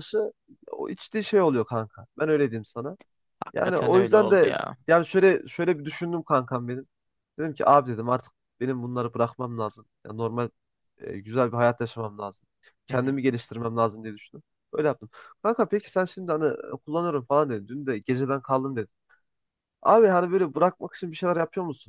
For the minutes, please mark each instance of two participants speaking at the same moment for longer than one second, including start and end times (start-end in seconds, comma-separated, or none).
3.5-4.8